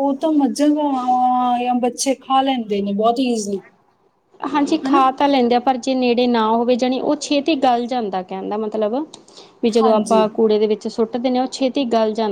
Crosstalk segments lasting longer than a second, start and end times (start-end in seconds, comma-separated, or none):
none